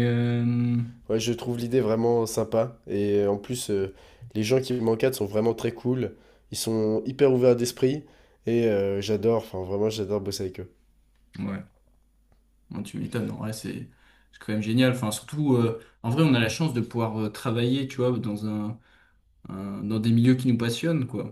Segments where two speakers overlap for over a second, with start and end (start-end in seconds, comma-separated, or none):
none